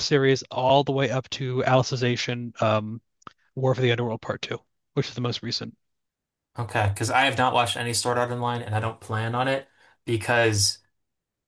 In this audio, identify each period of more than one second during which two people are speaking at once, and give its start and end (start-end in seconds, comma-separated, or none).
none